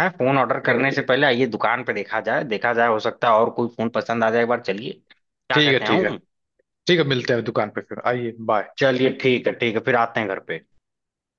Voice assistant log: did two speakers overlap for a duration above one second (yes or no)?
no